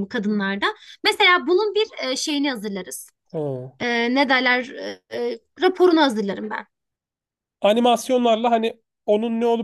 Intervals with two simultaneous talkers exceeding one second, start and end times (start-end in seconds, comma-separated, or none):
none